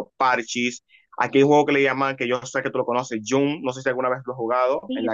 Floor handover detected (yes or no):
yes